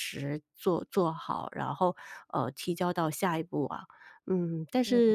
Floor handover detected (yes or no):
no